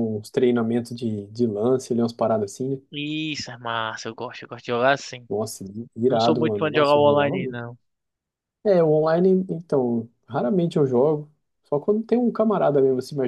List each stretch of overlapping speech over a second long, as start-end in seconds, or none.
6.1-7.6